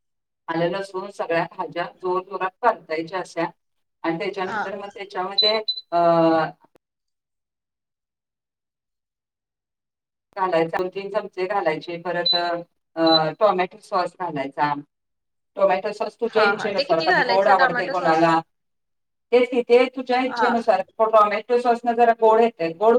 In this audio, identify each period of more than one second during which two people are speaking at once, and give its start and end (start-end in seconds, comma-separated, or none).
16.3-18.3